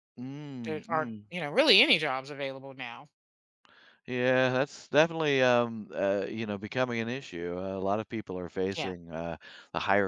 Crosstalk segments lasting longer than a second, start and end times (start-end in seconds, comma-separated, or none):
none